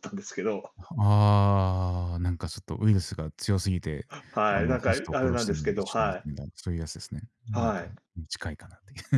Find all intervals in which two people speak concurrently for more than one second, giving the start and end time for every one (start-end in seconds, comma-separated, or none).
4.5-6.3